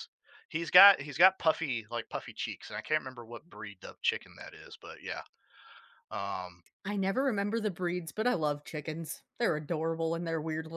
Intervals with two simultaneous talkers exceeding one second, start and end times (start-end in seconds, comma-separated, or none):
none